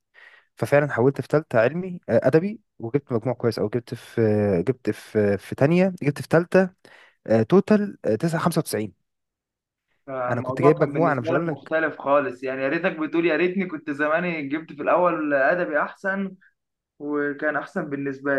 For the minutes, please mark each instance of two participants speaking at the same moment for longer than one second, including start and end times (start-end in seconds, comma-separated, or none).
10.3-11.7